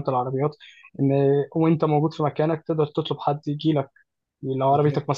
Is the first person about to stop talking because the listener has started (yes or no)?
no